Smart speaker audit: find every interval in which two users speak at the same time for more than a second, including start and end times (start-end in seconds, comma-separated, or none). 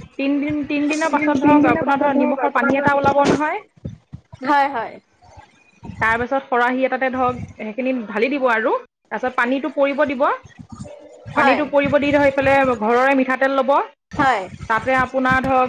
1.1-3.2